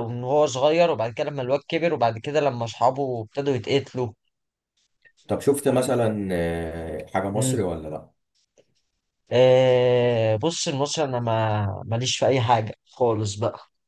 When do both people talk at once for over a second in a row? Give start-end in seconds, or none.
none